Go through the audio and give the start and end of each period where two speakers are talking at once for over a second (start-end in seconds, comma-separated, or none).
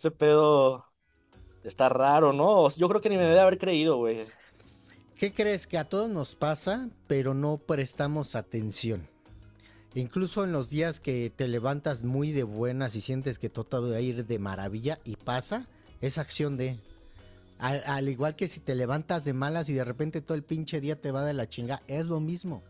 none